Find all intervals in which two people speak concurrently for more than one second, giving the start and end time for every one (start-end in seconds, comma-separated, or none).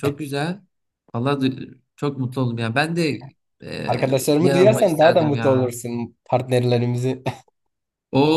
4.4-5.7